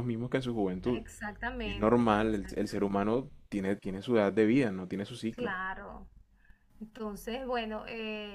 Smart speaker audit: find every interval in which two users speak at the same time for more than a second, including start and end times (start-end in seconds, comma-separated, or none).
1.6-3.2